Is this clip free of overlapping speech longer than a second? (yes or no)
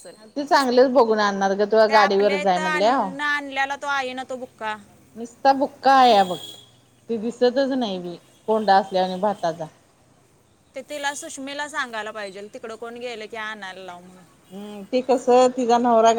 no